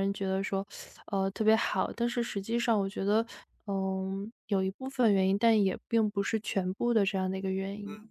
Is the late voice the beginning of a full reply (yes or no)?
yes